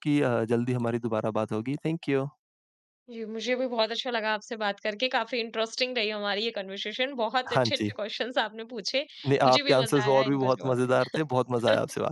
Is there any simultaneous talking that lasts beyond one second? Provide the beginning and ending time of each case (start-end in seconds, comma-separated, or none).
9.4-11.2